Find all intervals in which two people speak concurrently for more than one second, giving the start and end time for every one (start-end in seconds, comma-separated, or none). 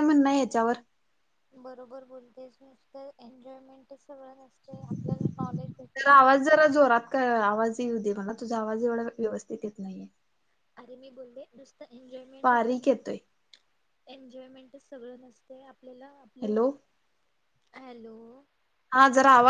4.7-6.3